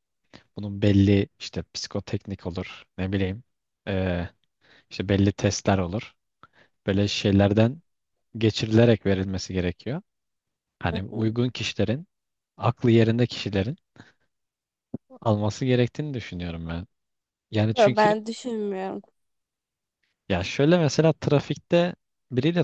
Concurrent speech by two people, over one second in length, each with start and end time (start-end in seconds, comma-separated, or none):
none